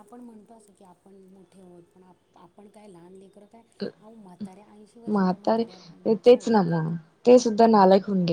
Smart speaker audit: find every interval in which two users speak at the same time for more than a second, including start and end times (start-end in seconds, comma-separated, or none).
5.1-6.8